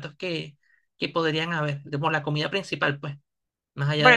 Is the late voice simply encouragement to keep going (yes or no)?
no